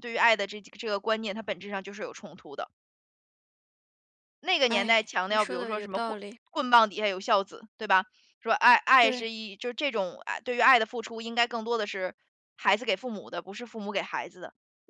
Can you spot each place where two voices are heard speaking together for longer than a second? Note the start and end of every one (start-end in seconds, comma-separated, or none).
4.7-6.4